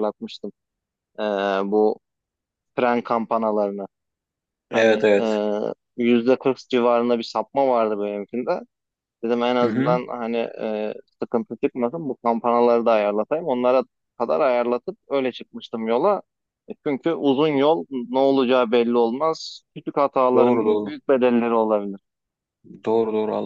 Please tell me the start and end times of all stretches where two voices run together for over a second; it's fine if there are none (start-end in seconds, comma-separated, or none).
none